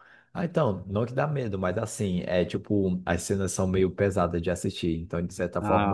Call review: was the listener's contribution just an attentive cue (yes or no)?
yes